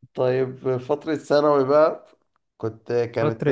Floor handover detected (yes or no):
yes